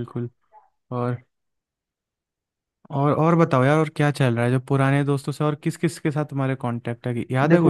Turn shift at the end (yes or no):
yes